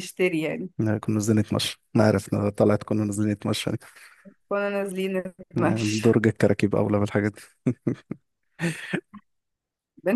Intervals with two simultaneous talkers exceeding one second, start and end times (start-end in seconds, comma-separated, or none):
none